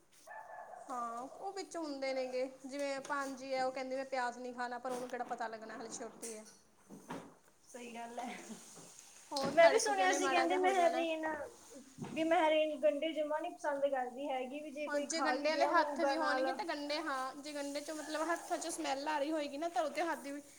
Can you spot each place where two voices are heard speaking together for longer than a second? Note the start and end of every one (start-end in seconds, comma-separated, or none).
9.5-11.1, 14.9-16.4